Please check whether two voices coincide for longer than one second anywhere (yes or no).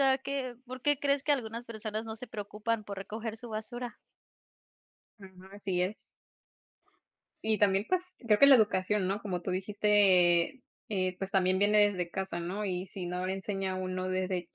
no